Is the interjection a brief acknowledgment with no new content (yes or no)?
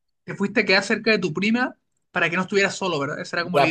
no